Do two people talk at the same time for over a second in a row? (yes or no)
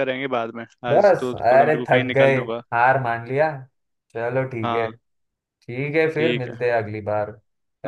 yes